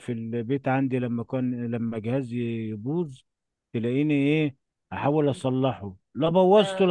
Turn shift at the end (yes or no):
no